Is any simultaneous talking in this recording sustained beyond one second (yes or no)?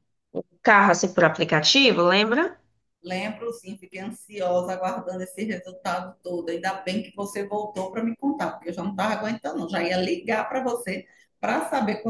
no